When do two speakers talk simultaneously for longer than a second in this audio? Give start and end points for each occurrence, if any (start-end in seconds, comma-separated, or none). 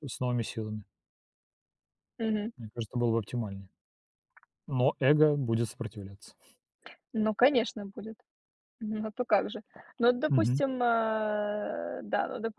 none